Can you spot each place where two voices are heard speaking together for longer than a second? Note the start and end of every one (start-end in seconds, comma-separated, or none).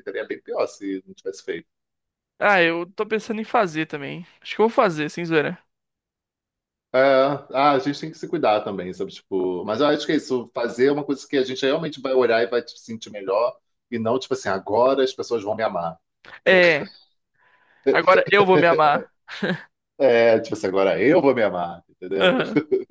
none